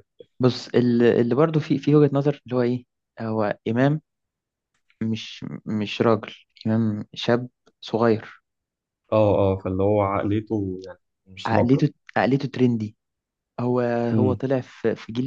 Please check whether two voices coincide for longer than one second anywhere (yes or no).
no